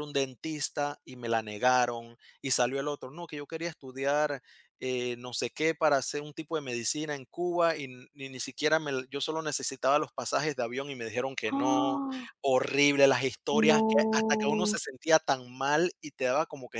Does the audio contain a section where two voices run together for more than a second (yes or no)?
yes